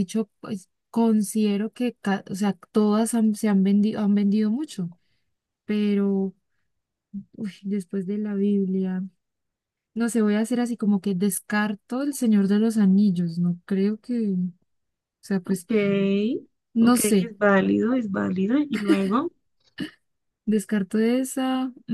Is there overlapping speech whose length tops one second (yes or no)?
no